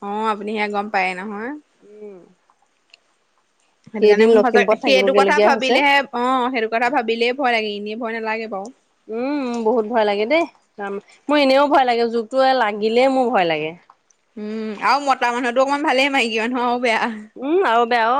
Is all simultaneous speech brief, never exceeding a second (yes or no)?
no